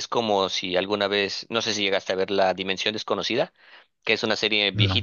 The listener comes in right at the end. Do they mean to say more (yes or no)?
no